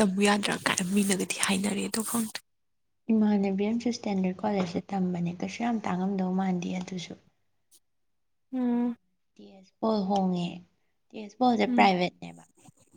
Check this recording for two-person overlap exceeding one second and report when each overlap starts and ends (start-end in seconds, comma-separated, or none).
none